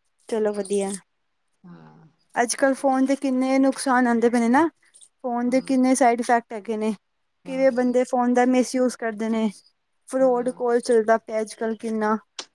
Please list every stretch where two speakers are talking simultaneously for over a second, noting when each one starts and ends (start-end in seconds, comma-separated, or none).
none